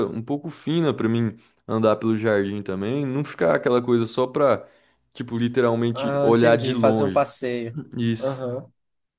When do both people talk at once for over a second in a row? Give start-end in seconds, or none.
5.9-7.3